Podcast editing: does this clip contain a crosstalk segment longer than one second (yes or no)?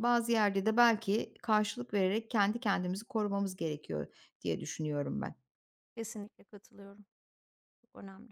no